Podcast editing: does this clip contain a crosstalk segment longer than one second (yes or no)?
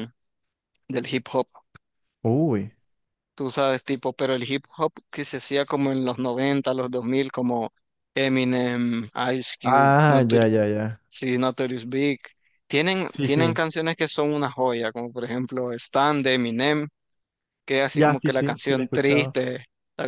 yes